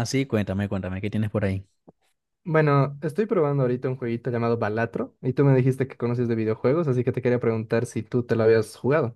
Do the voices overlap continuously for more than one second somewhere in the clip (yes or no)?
no